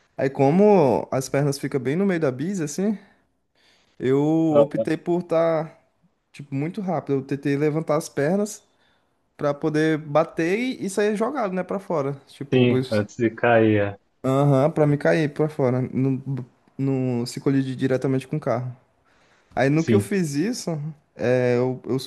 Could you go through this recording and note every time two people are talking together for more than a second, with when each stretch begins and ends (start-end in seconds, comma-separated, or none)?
none